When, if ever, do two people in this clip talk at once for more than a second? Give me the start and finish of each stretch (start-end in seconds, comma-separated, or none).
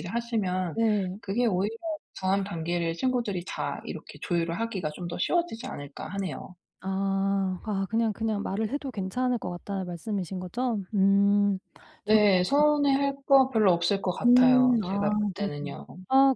14.2-15.7